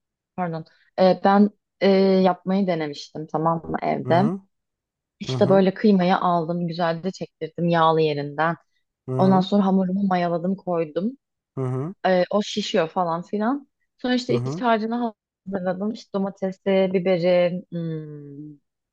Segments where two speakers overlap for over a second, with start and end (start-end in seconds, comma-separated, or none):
none